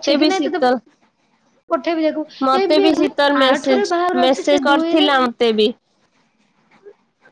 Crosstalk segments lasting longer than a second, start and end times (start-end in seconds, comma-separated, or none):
3.5-5.1